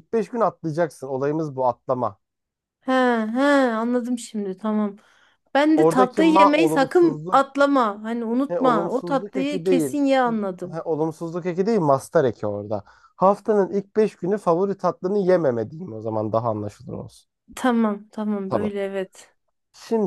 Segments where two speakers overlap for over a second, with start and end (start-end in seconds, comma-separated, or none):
5.8-7.5, 8.5-10.0